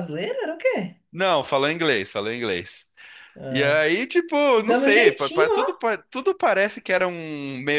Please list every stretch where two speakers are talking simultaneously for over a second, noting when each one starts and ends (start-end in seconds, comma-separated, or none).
4.6-5.8